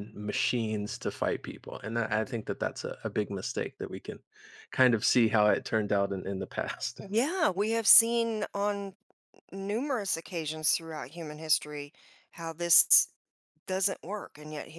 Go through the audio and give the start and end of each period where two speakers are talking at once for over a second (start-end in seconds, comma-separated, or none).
none